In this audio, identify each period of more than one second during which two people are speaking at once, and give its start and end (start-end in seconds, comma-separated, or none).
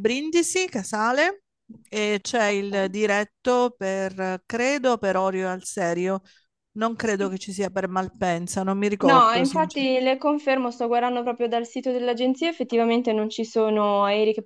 none